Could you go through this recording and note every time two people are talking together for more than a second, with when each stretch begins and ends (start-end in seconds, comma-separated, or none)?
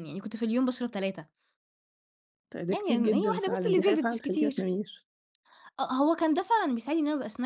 2.7-4.7